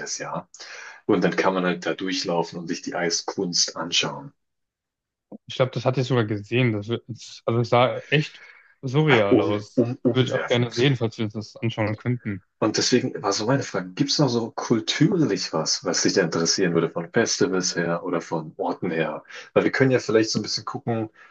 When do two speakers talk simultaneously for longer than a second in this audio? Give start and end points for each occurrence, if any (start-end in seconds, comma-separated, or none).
9.3-10.7